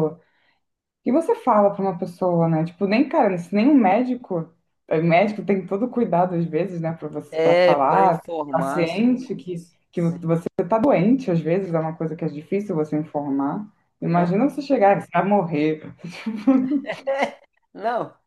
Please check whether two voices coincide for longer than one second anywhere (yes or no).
yes